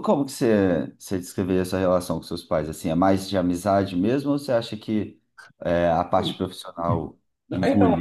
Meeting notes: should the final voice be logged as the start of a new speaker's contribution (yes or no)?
yes